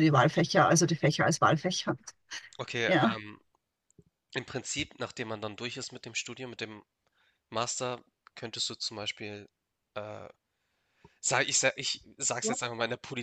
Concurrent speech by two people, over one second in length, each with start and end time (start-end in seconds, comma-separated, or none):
none